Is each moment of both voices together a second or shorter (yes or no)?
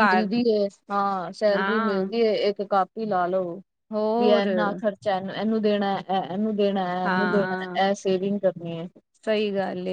yes